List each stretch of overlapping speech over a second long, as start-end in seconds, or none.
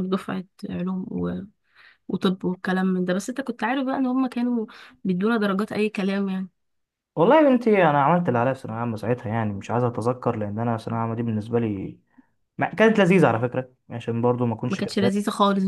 none